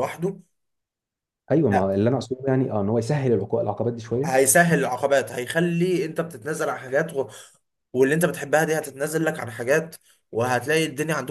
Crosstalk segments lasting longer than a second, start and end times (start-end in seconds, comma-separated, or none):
none